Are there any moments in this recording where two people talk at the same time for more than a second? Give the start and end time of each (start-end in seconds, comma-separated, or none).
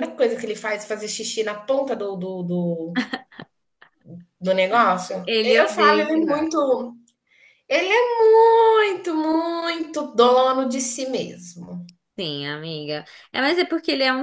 5.2-6.5